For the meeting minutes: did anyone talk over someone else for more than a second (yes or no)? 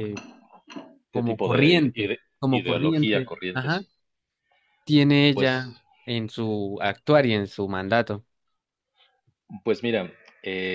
yes